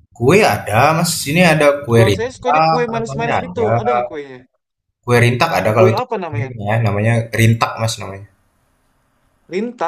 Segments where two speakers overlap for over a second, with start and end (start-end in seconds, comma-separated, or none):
1.9-3.7